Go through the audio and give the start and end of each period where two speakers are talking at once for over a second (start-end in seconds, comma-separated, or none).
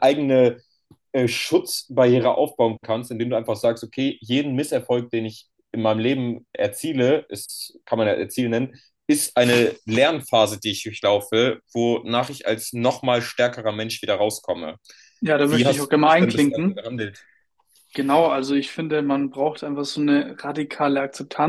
15.5-16.9